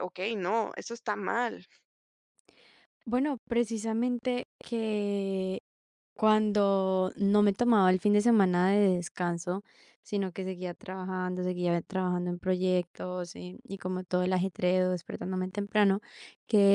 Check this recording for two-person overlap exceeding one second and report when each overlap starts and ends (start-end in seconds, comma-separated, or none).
none